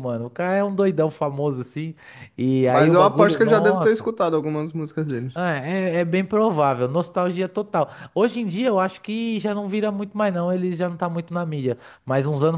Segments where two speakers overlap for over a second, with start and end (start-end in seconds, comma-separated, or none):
2.7-4.1